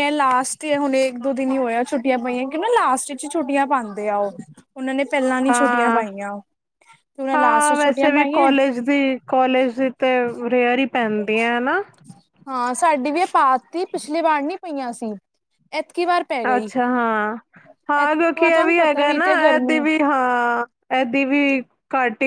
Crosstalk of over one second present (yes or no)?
yes